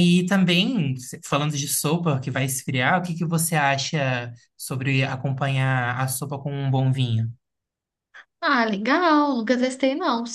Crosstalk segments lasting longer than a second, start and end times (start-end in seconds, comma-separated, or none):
none